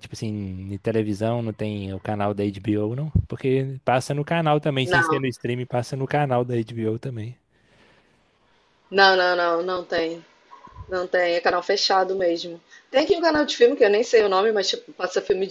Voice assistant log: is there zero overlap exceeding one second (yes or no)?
yes